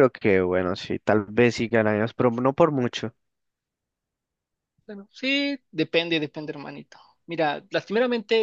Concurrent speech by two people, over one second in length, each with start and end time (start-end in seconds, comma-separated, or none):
none